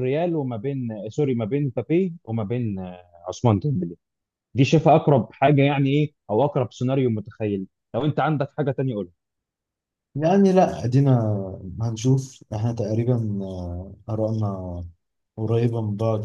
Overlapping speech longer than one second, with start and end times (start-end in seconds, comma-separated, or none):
none